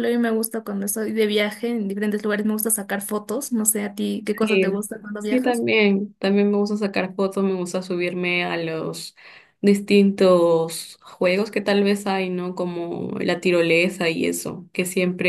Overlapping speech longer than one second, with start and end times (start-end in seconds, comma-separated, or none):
4.2-5.6